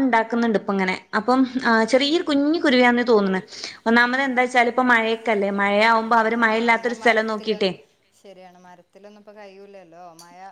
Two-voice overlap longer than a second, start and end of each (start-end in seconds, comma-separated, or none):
6.5-7.7